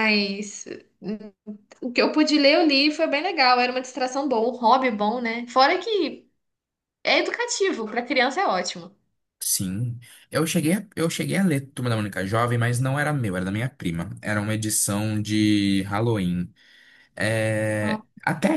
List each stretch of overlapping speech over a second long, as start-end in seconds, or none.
none